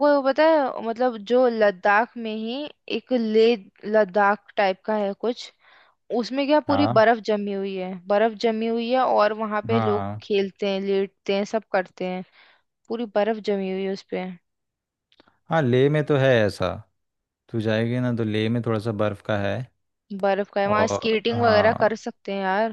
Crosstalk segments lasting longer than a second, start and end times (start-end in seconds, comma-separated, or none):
20.6-21.9